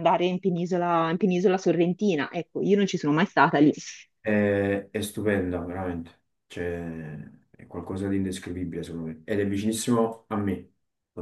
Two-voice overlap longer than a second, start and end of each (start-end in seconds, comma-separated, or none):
none